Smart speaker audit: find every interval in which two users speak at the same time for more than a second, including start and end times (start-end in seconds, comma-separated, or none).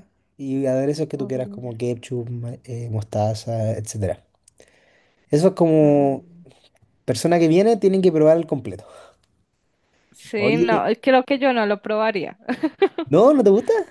none